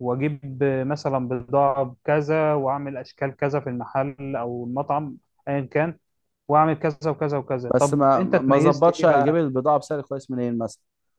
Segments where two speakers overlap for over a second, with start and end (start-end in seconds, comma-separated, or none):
7.8-9.4